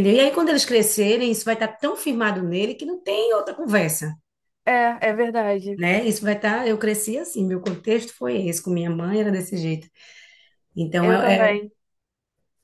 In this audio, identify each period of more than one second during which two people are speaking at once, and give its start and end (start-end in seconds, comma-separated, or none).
none